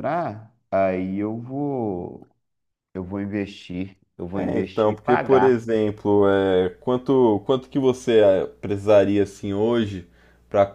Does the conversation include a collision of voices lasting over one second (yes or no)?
yes